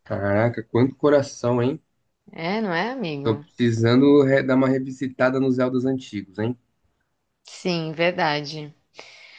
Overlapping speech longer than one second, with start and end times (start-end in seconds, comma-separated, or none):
none